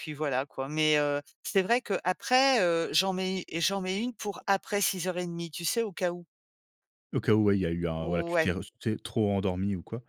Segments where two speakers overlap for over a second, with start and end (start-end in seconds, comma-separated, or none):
none